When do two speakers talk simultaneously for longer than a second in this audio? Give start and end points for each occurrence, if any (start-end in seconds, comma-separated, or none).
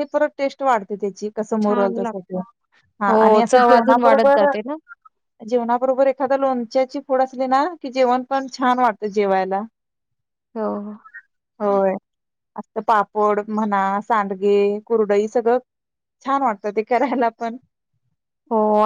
3.1-4.5